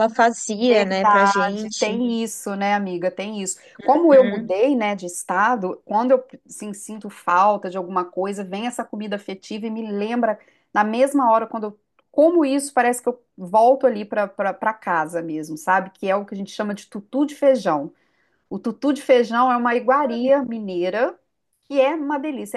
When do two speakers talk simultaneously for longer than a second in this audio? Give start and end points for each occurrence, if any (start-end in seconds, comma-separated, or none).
0.7-2.0